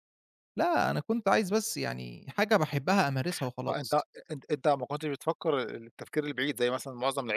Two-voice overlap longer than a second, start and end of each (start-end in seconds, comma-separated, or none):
none